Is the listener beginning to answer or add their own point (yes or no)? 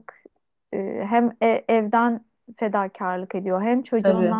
no